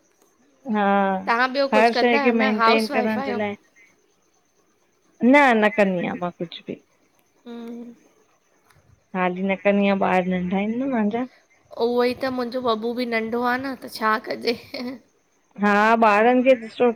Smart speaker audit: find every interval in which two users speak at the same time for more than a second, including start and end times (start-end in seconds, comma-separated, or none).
1.7-3.4